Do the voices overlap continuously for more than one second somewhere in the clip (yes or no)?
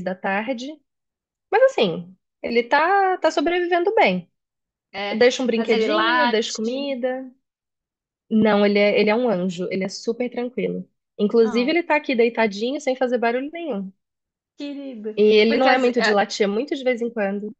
yes